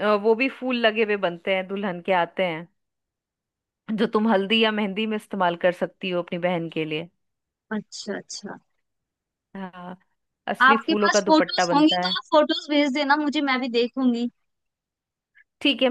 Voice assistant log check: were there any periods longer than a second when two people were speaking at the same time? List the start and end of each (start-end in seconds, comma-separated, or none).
10.6-12.1